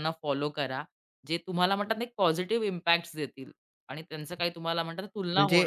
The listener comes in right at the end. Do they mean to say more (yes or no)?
yes